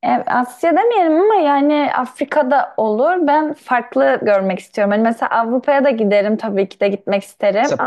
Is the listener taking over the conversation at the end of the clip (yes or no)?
no